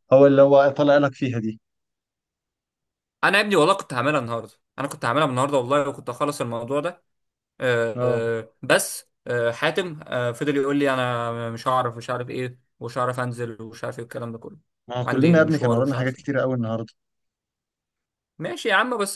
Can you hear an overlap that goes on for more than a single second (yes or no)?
yes